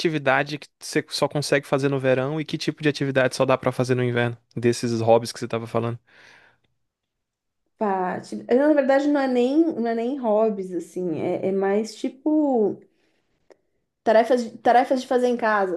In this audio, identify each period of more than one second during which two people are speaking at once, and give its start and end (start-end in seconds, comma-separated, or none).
none